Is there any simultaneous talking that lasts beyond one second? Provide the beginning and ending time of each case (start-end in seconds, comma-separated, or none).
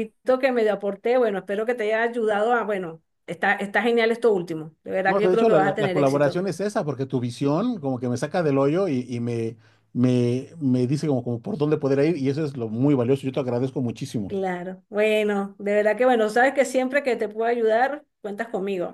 5.1-6.4